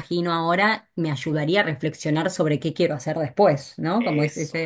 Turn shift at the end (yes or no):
no